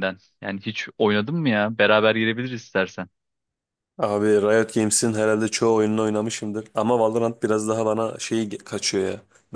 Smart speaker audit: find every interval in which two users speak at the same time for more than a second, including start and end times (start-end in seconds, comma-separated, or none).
none